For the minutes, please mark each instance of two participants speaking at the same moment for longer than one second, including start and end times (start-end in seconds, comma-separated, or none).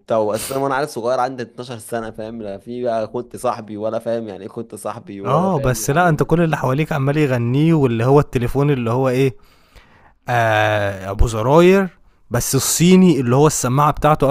5.2-6.8